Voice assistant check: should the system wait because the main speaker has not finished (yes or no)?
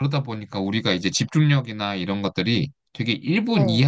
yes